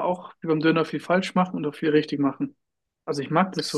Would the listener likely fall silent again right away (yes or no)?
yes